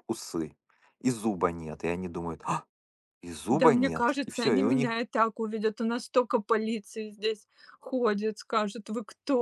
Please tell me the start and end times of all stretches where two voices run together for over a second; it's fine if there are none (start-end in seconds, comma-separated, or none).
3.5-5.0